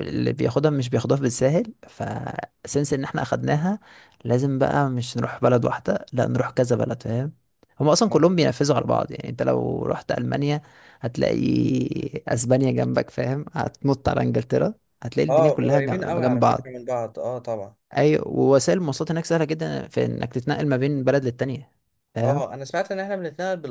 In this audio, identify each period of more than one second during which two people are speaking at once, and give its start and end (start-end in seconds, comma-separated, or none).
15.3-16.8